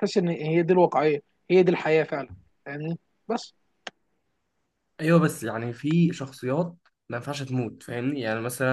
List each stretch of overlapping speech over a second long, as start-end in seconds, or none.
none